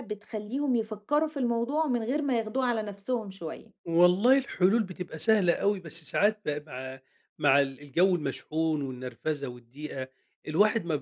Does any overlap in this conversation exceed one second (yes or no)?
no